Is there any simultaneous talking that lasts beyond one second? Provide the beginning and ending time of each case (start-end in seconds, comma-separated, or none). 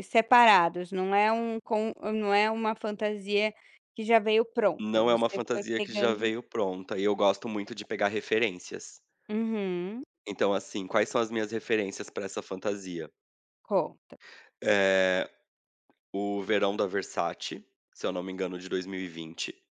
4.8-6.3